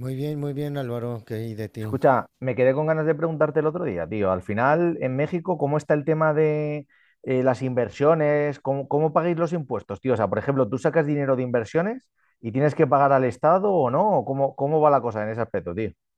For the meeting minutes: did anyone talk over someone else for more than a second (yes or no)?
no